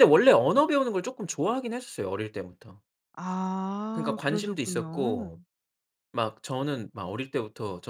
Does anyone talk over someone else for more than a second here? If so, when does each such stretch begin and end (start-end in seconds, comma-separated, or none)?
3.9-5.3